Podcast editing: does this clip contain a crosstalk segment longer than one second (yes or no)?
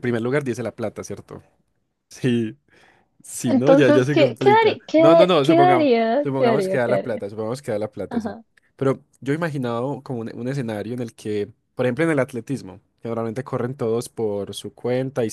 yes